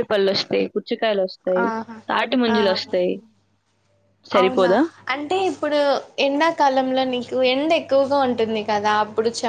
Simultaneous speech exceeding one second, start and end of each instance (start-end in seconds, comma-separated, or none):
none